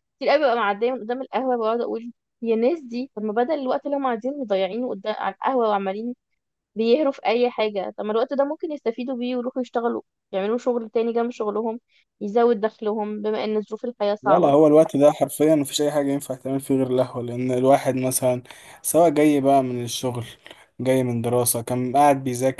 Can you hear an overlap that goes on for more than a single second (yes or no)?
no